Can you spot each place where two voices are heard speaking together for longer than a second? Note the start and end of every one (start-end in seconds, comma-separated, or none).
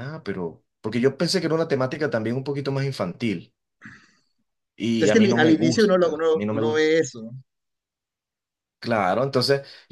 5.1-6.8